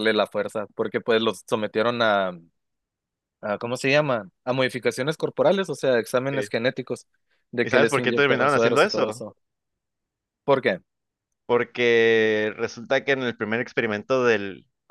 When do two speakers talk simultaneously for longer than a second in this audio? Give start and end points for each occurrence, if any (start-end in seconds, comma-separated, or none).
7.6-9.2